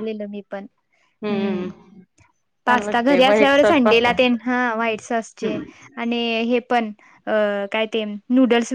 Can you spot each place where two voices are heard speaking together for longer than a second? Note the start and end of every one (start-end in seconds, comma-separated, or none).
2.6-4.2